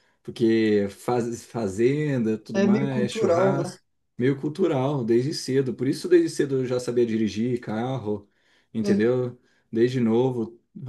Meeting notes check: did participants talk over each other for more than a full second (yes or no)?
yes